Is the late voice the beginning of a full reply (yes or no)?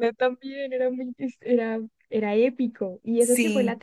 no